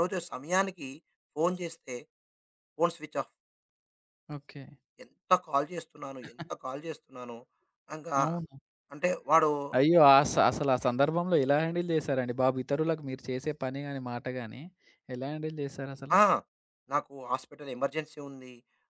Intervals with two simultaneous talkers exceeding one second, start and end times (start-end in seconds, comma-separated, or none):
none